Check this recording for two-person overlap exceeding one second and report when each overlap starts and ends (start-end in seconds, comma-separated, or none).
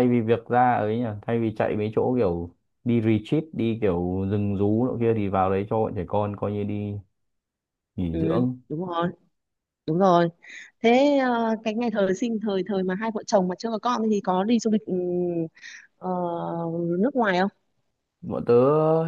none